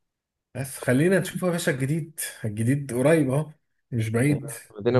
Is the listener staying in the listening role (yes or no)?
no